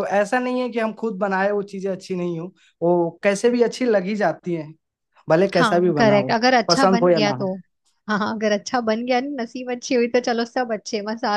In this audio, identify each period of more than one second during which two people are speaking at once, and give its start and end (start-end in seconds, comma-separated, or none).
5.5-7.4